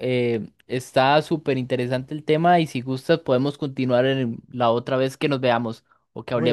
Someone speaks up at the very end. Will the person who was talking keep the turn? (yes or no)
no